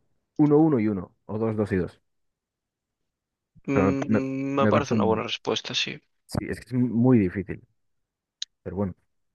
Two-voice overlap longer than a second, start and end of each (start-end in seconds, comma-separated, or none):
3.7-5.2